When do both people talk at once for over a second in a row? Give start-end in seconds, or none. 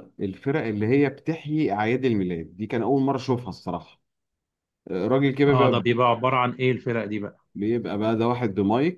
none